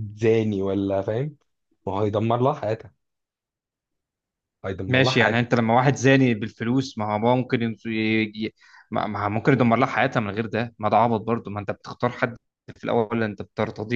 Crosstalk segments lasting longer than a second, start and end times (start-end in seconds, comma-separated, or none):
none